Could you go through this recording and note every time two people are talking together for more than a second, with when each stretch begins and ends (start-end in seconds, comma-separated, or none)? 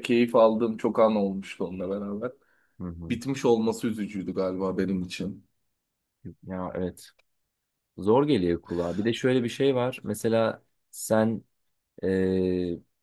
none